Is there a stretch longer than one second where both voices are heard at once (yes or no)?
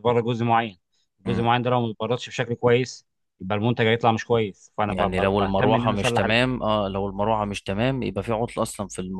yes